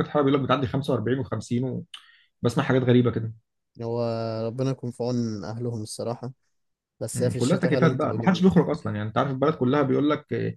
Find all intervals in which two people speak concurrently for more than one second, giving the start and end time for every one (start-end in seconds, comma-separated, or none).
7.1-8.5